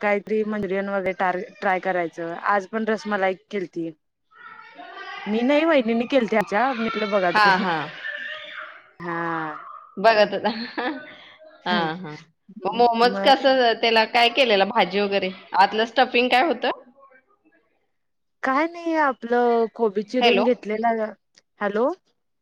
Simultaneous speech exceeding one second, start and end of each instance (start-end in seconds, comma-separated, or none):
none